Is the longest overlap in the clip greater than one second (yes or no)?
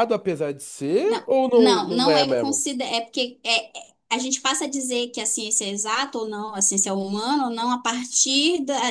yes